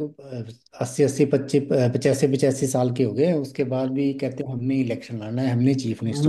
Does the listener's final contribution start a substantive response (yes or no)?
yes